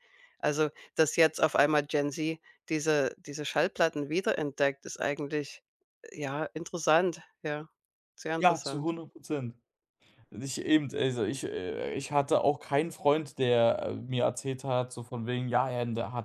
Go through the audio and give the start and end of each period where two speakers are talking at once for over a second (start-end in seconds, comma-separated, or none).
none